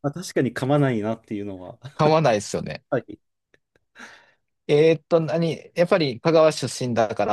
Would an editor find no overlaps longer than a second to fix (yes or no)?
yes